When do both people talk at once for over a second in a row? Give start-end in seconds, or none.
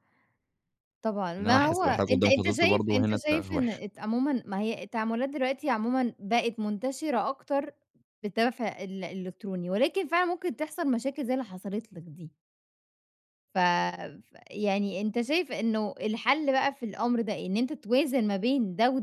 1.4-3.8